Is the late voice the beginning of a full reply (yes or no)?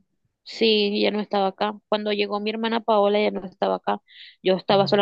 no